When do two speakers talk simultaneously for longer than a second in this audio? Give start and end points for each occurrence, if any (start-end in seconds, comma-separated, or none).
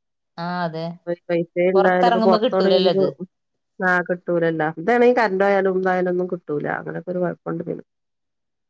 1.8-3.0